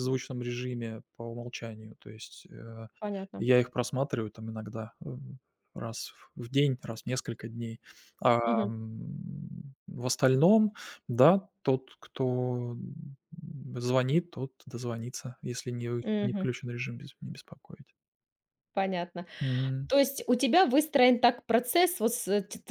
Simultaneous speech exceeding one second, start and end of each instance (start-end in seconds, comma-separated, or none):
none